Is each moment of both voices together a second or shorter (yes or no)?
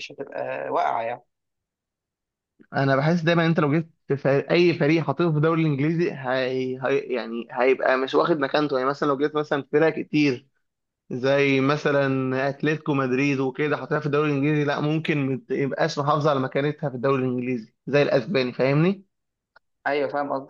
yes